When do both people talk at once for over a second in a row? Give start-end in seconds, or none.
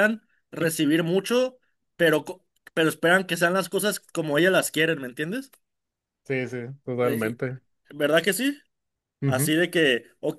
none